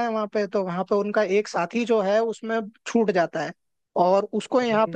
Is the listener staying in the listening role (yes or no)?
yes